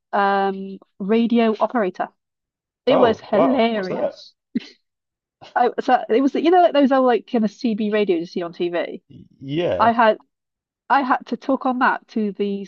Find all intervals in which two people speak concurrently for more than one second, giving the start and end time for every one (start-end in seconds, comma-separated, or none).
2.9-4.2